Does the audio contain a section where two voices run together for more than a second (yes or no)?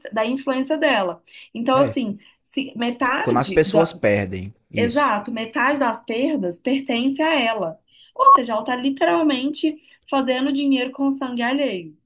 no